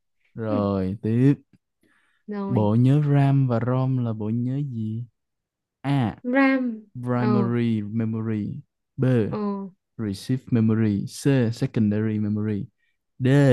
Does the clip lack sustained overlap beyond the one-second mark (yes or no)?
yes